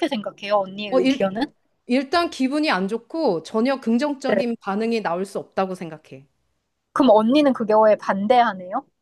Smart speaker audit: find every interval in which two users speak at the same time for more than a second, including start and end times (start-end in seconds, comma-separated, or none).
none